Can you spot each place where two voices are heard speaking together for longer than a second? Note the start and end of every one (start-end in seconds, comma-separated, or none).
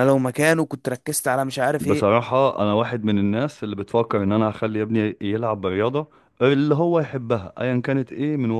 none